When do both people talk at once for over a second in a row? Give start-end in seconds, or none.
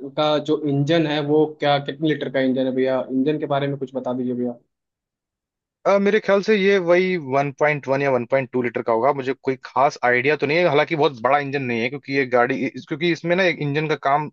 none